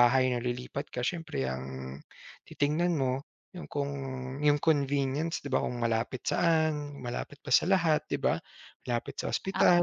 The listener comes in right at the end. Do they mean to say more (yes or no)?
no